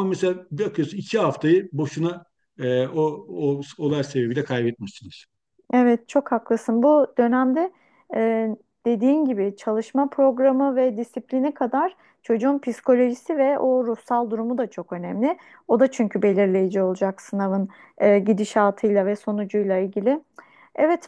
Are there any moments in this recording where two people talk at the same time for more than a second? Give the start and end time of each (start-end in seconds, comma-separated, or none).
none